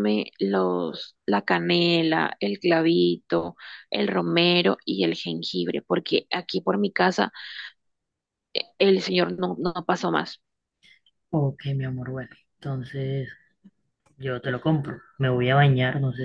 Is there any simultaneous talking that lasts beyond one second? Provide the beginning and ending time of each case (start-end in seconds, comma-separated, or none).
none